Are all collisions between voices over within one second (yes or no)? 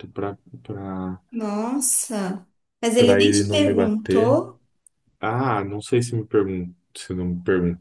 no